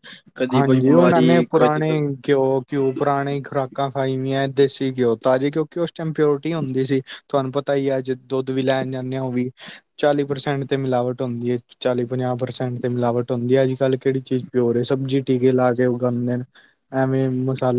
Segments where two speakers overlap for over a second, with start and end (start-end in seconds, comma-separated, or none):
0.6-1.9